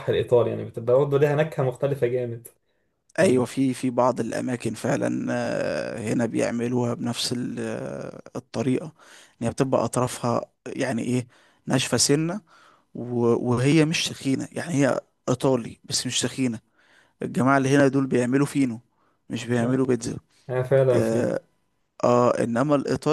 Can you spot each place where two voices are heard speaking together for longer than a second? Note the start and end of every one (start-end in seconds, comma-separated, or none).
none